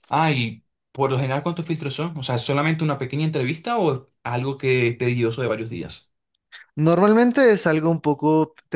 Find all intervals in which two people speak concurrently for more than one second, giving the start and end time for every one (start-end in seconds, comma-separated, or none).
none